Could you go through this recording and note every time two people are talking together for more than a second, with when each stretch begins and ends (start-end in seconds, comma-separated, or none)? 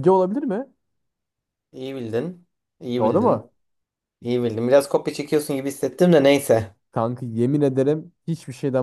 none